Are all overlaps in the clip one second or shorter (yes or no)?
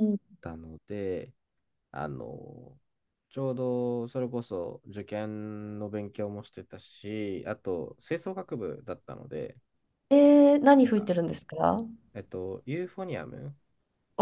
yes